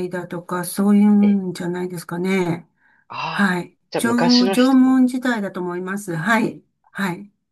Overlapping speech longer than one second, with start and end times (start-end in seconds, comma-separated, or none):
3.3-5.0